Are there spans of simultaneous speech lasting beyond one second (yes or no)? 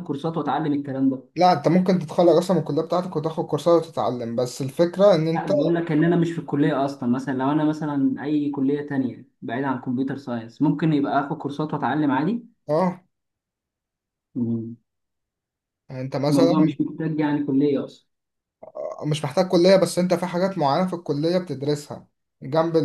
no